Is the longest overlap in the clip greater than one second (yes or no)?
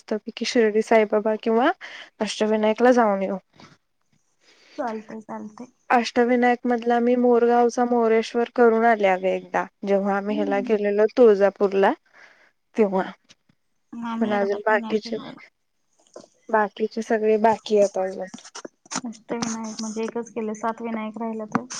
no